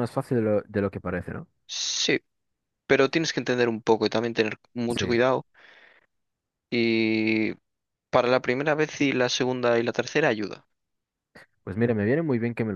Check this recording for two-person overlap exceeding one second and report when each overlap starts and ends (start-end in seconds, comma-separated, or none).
none